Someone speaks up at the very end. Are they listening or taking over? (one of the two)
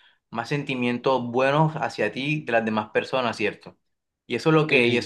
listening